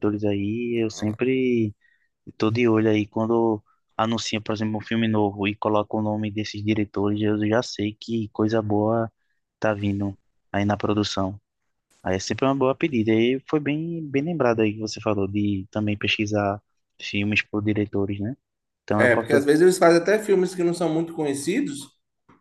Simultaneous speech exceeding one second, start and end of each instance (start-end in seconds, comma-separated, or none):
none